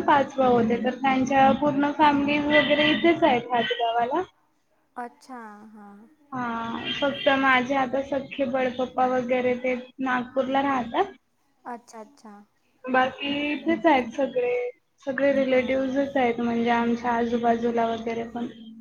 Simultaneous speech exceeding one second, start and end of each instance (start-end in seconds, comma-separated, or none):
none